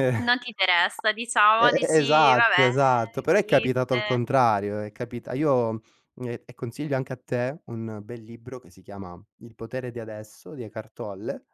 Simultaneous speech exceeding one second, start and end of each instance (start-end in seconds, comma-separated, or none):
1.5-4.2